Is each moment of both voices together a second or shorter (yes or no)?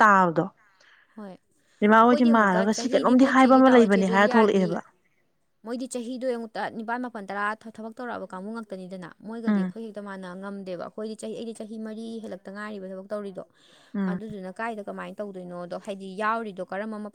no